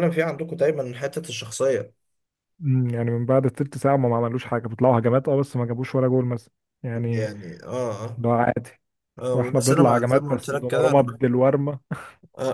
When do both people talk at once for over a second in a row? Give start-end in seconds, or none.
9.3-11.2